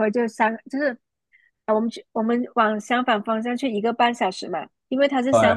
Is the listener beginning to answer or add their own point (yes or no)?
no